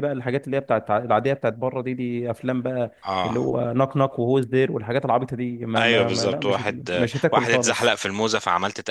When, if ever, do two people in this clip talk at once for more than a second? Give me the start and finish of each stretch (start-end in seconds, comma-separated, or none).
5.7-8.0